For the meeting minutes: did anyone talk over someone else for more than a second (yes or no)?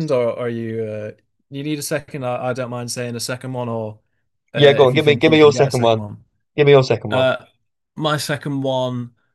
yes